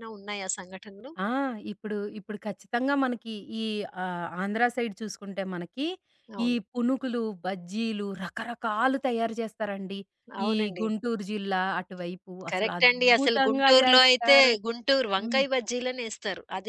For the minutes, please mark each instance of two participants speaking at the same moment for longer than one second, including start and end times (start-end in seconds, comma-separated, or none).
12.5-14.5